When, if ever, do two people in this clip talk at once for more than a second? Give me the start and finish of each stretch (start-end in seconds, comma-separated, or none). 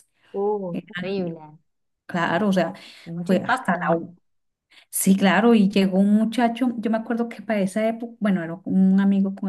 none